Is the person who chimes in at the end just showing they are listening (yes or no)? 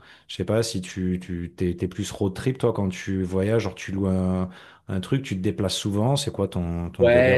no